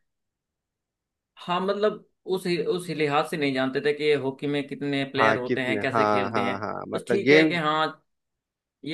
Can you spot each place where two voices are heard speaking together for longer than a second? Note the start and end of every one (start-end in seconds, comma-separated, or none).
5.2-7.5